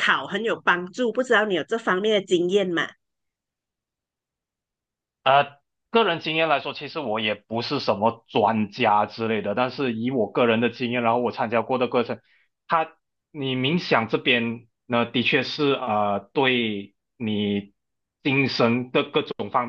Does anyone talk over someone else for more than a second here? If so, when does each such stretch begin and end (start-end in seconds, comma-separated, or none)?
none